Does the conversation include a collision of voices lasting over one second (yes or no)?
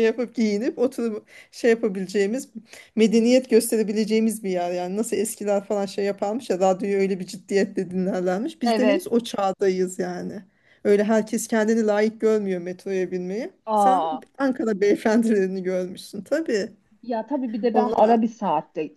no